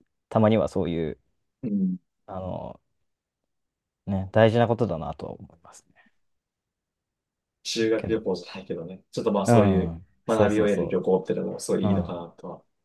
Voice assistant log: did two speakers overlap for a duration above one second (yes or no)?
yes